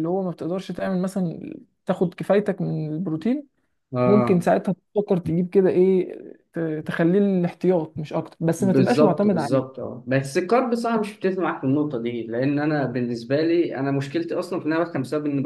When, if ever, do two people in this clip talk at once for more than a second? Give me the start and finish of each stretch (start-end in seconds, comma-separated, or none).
8.6-9.8